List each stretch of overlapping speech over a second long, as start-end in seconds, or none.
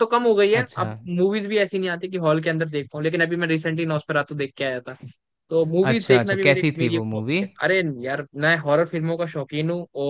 5.9-7.4